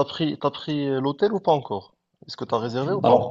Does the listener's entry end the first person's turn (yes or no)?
yes